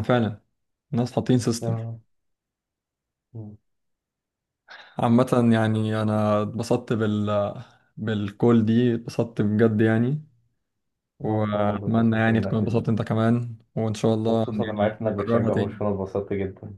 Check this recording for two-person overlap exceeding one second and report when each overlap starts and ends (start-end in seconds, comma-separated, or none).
11.2-12.8, 14.3-15.8